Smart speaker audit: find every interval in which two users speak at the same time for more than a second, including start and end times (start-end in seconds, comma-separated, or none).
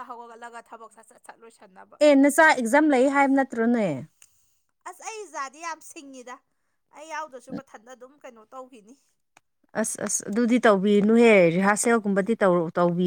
none